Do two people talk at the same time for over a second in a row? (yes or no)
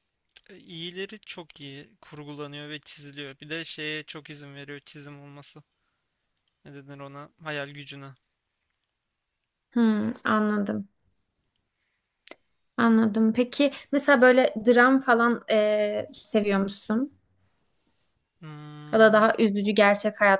no